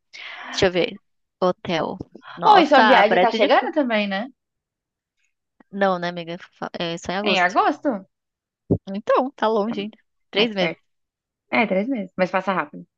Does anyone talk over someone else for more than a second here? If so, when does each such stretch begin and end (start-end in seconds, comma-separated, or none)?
2.5-3.7